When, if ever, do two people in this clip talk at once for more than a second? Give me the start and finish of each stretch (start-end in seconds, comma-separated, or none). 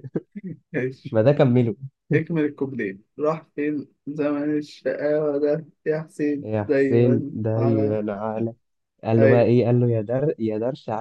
6.4-8.0